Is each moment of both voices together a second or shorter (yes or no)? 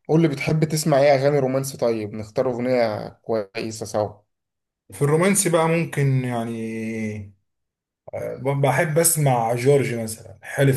yes